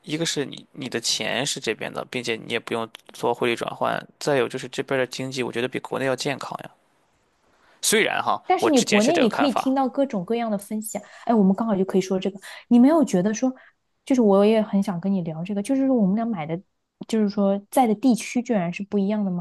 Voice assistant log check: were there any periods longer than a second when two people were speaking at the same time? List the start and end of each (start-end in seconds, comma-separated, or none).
8.5-9.8